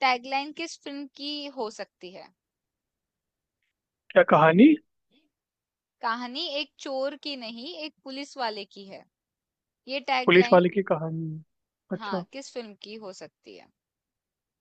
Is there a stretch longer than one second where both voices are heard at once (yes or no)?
no